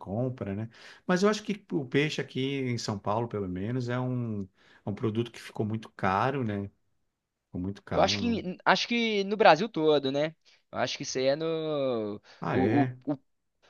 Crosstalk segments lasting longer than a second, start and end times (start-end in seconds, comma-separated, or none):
none